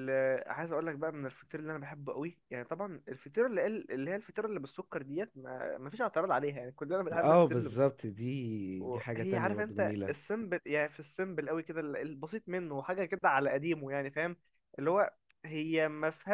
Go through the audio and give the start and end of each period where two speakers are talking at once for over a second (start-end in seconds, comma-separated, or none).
8.9-10.1